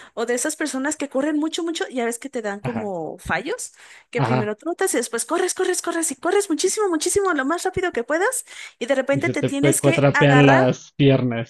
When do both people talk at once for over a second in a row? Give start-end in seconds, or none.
9.1-10.7